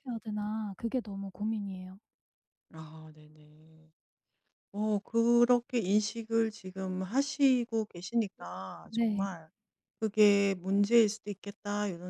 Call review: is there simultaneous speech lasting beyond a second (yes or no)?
no